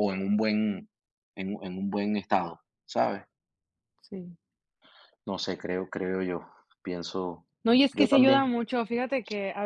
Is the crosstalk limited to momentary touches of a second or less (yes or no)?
yes